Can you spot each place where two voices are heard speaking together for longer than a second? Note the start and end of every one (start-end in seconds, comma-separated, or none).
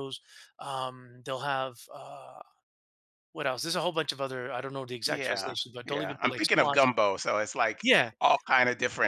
5.1-6.8